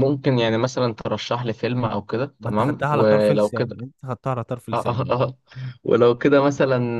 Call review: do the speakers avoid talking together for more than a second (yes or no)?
no